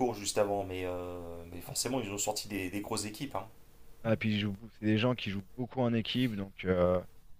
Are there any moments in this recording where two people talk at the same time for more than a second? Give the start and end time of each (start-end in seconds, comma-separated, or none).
none